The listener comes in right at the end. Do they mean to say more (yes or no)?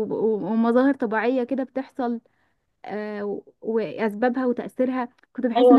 yes